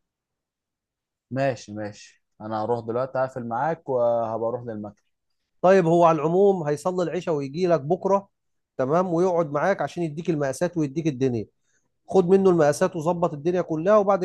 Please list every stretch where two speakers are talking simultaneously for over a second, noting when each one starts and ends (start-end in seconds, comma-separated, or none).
none